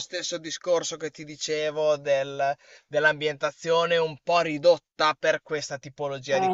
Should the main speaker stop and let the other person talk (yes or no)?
yes